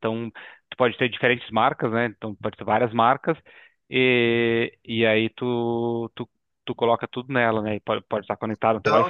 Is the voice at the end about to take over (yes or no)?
no